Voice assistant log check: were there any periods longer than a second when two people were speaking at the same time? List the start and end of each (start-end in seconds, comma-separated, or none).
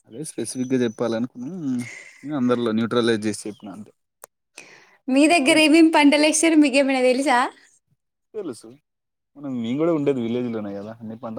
none